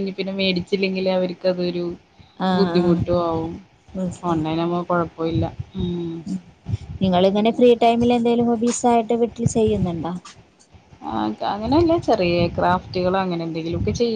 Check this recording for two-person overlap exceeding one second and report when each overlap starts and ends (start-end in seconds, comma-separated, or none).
none